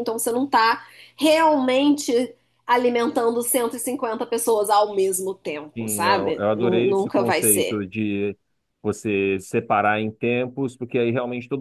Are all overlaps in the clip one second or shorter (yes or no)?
no